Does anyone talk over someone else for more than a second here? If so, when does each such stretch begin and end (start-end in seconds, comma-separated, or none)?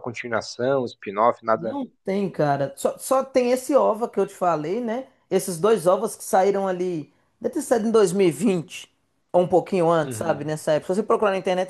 none